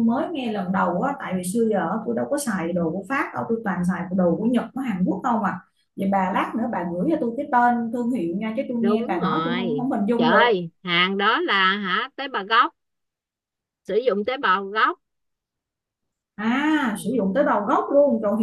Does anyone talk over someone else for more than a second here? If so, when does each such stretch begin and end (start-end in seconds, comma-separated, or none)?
8.8-10.5